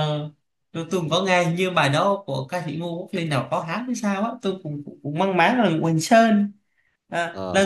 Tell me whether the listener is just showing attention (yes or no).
yes